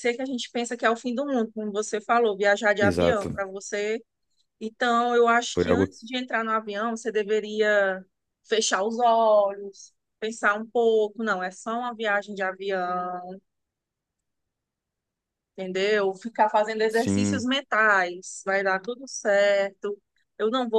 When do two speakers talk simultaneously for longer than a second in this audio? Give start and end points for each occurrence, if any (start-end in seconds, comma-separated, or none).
none